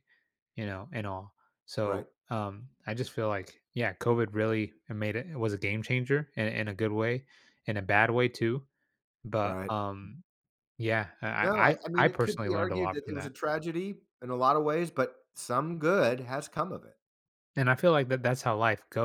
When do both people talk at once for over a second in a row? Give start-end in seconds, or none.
11.4-13.3